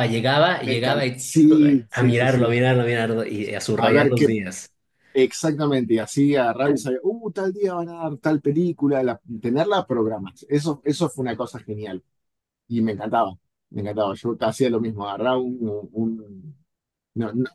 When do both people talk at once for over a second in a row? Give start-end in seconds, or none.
0.6-2.5